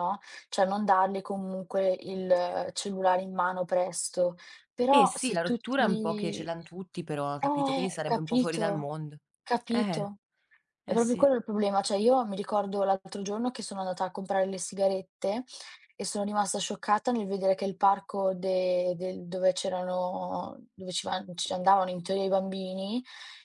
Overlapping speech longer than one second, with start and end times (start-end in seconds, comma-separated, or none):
4.9-6.5, 7.4-8.9